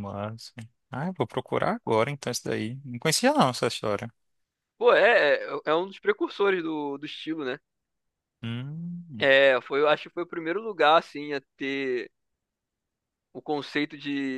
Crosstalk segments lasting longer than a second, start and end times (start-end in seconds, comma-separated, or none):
none